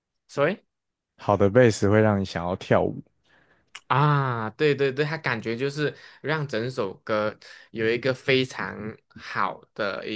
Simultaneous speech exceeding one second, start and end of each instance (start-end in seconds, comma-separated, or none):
none